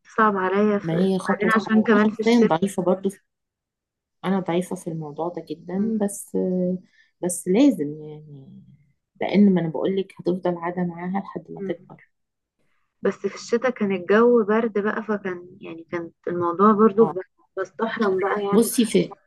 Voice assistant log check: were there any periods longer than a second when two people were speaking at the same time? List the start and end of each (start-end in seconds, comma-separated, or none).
0.8-2.5